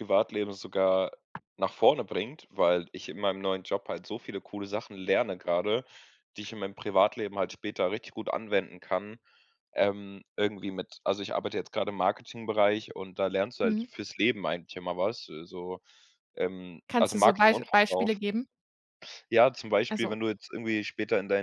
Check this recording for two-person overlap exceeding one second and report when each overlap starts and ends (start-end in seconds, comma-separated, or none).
16.9-18.2